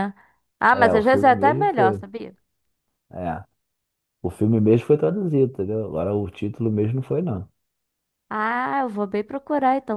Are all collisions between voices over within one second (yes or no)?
no